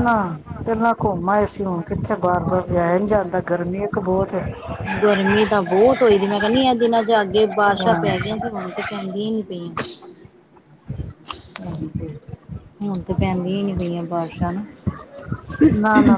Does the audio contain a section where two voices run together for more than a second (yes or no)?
no